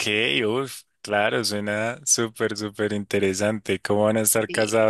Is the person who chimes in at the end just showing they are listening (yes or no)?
yes